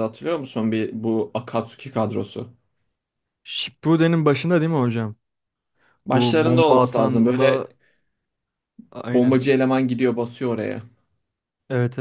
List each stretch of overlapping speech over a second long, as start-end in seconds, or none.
6.1-7.7